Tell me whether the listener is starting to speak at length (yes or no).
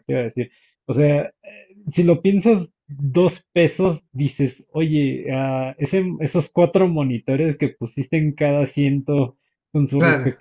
no